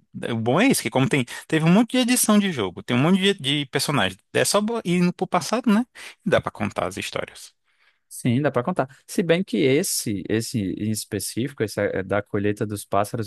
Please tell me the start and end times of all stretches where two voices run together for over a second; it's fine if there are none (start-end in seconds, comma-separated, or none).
none